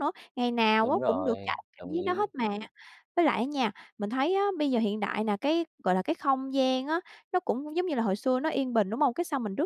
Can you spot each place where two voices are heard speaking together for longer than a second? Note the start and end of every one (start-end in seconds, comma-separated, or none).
0.8-2.3